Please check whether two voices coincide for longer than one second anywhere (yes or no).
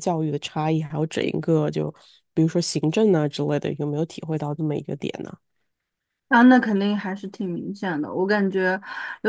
no